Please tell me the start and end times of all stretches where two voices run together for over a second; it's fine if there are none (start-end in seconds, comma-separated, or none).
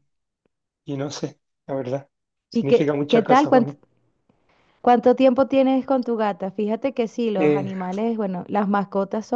2.5-3.7